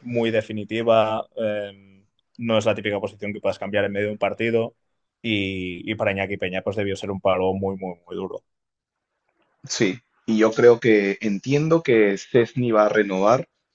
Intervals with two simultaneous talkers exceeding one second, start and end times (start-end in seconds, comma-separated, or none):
none